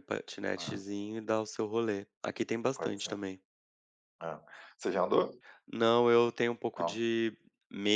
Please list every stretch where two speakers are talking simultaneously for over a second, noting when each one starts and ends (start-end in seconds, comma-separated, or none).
none